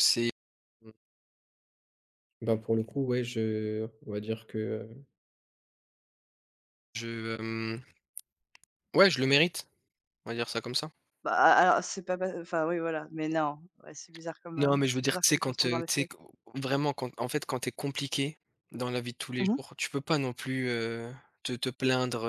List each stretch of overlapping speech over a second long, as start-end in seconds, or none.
14.6-16.1